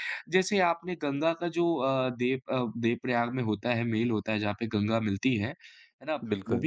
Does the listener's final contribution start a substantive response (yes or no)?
no